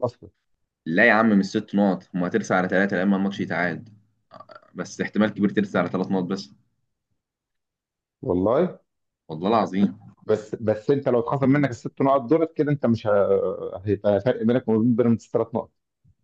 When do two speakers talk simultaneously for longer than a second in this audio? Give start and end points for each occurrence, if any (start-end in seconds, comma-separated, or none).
none